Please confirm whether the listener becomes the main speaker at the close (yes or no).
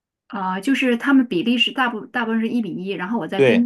no